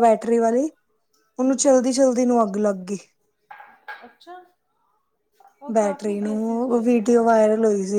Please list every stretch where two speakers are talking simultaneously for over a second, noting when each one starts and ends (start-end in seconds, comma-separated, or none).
5.7-7.4